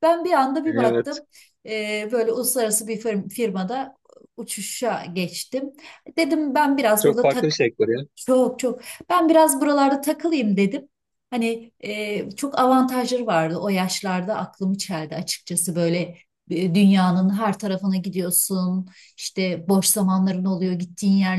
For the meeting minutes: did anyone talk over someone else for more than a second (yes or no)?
no